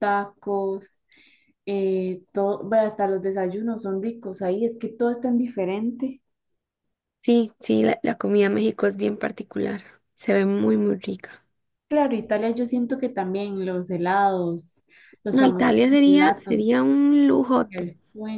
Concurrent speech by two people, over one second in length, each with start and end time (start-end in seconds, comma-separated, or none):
15.3-16.9